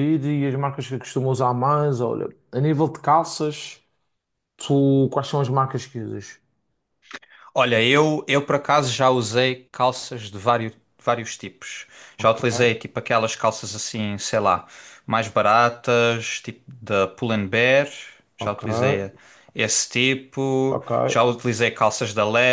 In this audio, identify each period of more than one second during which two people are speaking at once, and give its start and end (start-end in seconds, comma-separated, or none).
none